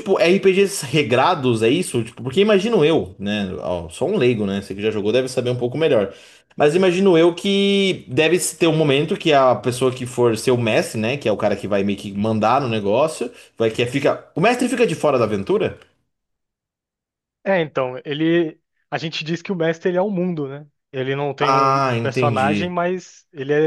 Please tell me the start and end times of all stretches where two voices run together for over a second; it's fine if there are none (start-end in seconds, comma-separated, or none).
21.4-22.8